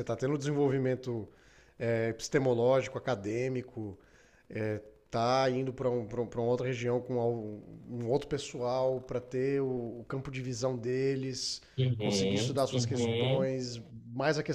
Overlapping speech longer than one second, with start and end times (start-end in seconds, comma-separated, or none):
12.0-13.5